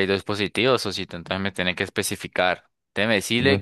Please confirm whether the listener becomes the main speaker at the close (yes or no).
no